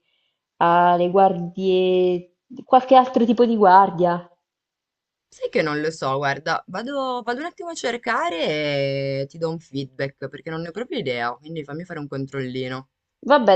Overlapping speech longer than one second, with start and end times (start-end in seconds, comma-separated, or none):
none